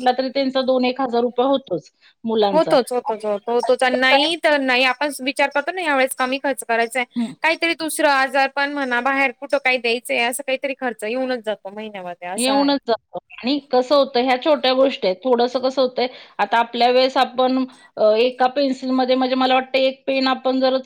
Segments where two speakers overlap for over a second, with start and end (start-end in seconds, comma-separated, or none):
none